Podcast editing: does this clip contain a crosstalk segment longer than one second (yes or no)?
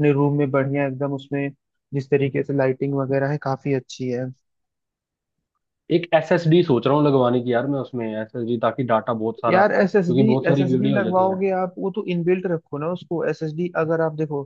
yes